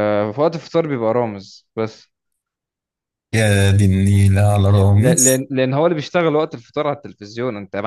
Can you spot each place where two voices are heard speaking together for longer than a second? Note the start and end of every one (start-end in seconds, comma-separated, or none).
none